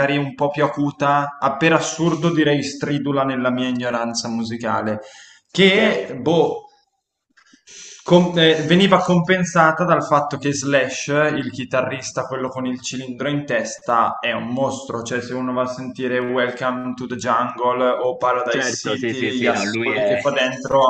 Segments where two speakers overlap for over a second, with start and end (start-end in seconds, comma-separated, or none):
18.5-20.2